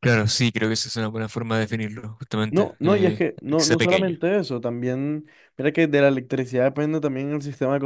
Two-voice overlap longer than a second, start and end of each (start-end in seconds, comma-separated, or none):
2.5-4.2